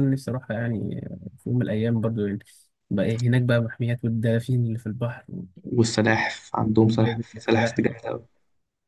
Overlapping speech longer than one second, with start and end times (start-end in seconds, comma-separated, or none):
6.1-8.2